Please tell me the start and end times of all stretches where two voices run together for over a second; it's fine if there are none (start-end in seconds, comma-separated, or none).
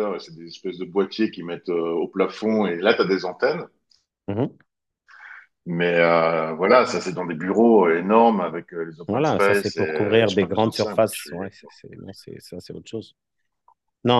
9.1-11.7